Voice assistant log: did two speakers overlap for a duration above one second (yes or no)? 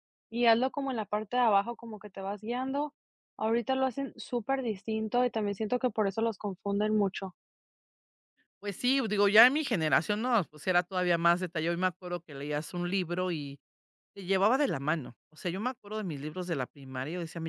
no